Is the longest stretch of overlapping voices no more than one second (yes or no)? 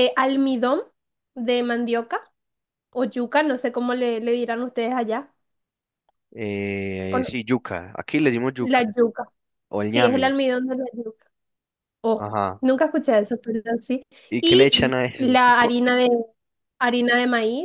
no